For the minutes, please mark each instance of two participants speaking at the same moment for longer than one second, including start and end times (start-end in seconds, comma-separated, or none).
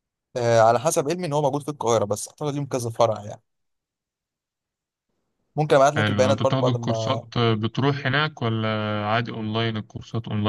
6.0-7.2